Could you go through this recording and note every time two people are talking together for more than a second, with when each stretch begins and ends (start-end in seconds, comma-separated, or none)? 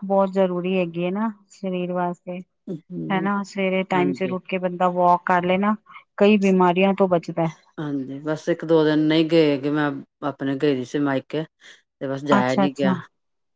none